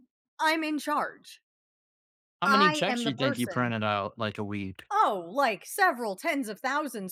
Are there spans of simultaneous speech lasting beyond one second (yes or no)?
yes